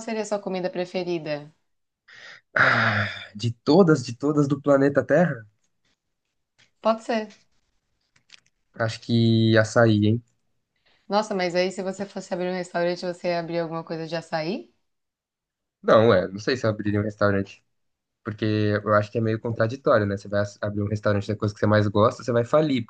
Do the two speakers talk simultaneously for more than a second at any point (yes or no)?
no